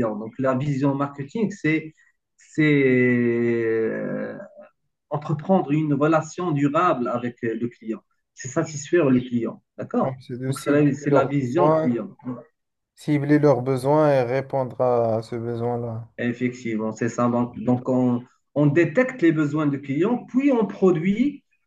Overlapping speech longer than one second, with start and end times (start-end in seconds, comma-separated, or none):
10.0-11.9